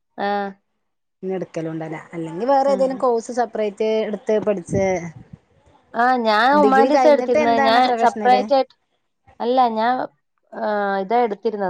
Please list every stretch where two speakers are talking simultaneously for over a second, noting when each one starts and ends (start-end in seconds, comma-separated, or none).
6.6-8.4